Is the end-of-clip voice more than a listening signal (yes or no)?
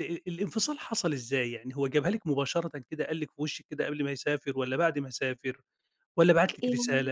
no